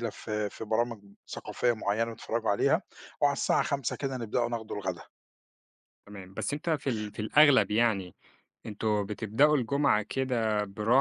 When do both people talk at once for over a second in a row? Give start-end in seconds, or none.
none